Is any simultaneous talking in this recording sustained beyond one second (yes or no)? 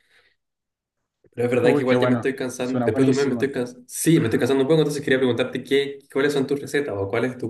yes